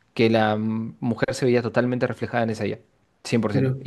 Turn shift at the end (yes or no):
no